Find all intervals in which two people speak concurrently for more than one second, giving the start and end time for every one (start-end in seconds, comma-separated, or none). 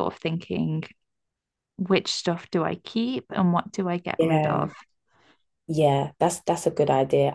none